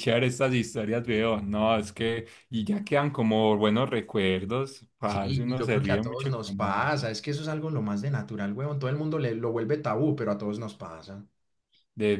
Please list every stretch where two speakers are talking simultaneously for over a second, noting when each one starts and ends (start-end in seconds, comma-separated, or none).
5.0-6.8